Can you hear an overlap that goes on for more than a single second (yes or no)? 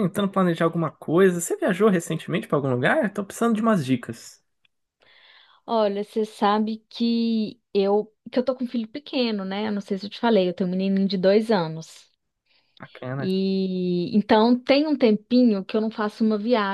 no